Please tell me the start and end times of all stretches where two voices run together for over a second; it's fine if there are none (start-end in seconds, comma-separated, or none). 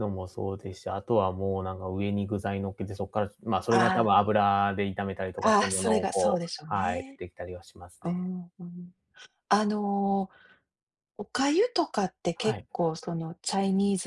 5.4-7.2